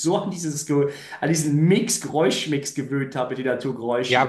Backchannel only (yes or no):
no